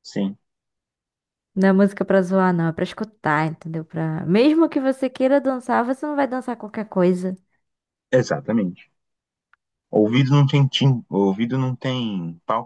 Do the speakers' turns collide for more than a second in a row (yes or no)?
no